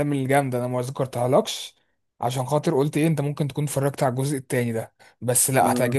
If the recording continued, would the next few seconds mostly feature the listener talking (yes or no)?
no